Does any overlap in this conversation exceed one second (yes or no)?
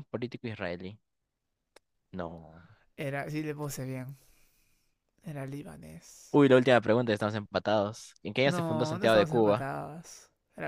yes